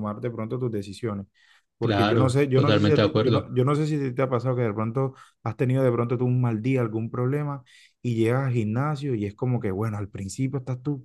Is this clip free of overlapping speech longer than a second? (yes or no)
no